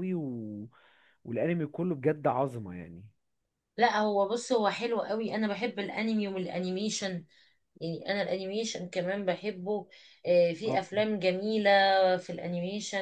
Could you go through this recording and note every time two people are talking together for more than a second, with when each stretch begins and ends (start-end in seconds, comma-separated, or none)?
none